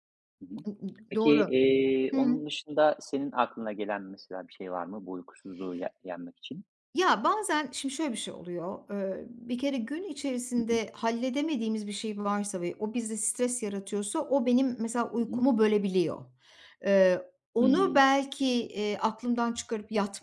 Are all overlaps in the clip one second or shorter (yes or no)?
yes